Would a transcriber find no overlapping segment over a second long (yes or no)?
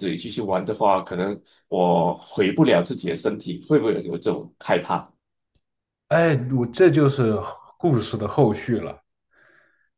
yes